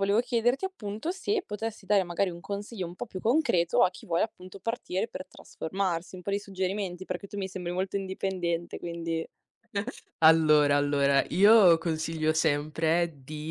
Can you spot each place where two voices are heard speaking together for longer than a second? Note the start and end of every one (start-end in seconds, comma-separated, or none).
none